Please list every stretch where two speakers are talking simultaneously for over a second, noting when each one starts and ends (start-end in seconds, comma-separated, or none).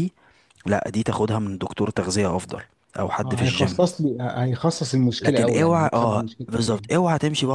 5.2-6.9